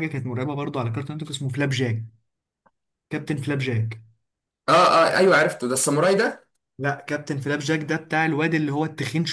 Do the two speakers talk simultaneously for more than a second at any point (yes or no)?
no